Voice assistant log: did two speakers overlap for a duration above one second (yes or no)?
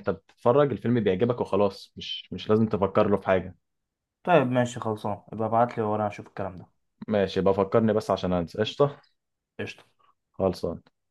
no